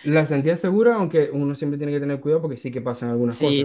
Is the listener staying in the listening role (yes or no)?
no